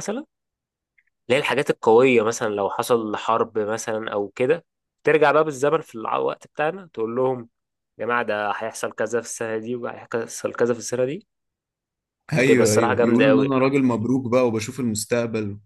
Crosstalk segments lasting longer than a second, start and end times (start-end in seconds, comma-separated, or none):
12.4-13.6